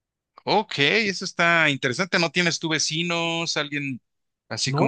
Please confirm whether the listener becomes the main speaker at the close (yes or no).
yes